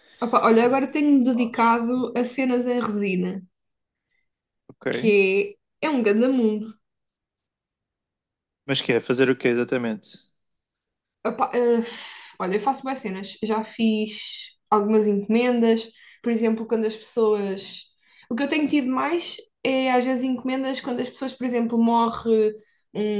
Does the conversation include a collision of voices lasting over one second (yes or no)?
no